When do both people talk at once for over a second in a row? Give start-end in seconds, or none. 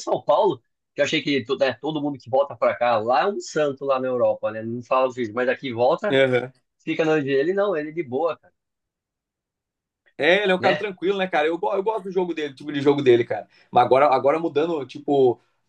none